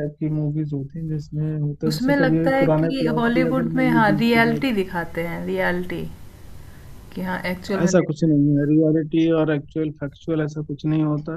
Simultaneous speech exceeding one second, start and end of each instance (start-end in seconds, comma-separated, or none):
1.9-4.8